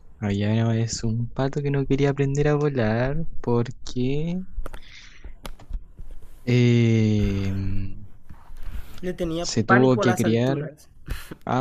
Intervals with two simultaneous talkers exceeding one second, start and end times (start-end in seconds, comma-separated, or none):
9.4-10.7